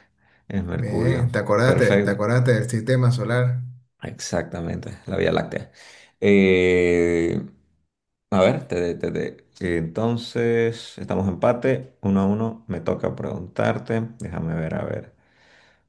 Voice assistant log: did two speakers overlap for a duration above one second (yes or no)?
yes